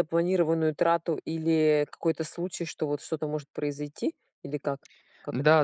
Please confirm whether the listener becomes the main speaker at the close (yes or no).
yes